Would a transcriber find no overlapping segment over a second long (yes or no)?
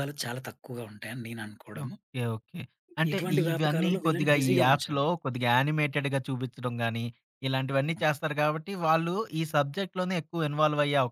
no